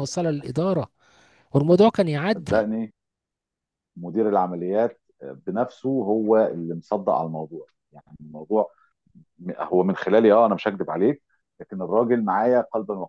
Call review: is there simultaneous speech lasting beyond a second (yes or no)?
no